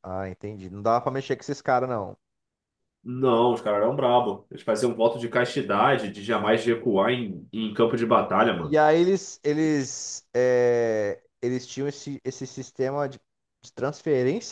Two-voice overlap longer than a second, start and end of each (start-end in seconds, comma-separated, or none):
none